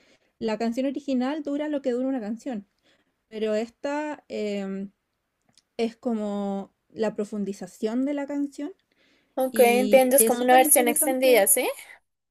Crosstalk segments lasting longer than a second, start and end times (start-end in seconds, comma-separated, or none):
9.5-11.5